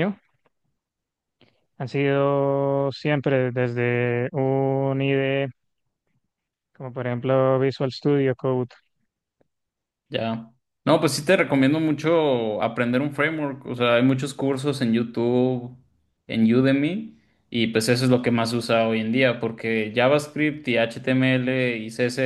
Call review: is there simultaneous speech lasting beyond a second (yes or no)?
no